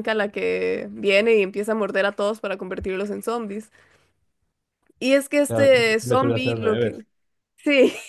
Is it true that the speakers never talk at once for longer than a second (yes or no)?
no